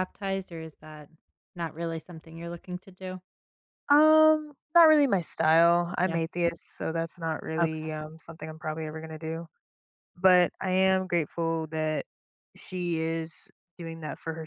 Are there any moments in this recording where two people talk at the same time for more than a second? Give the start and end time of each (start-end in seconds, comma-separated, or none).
none